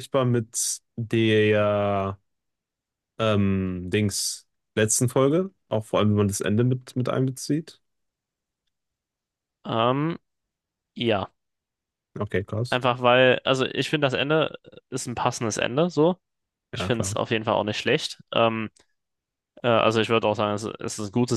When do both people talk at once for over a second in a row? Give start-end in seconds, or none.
none